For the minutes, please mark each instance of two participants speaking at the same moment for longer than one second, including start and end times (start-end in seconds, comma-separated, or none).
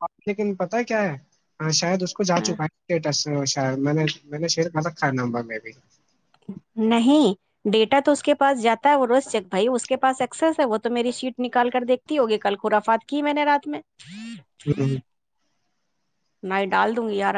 none